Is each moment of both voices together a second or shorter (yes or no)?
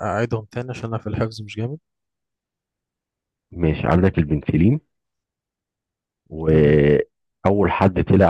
yes